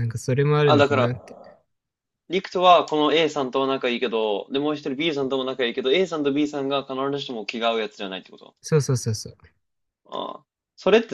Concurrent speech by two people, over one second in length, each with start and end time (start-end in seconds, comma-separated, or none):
none